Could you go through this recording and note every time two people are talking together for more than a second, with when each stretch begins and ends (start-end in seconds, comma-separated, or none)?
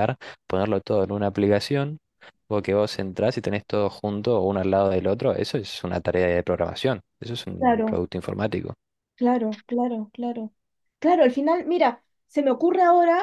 none